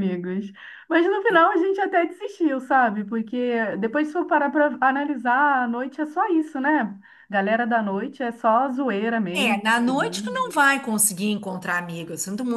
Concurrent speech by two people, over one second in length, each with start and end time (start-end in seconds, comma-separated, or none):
9.4-10.7